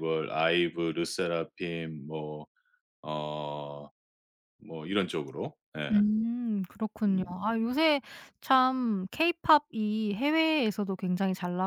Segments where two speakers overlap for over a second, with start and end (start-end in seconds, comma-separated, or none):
none